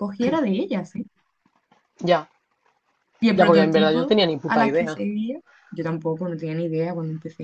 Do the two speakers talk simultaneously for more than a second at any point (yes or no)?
yes